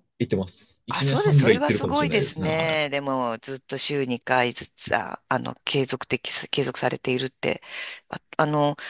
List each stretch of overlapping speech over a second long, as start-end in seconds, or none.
0.9-2.9